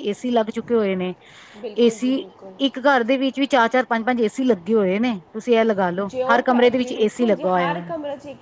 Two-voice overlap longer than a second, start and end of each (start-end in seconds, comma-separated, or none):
6.1-7.9